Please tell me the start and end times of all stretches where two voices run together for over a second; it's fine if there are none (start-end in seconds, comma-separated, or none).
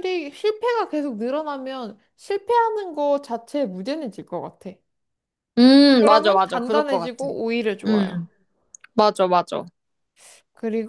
6.0-7.3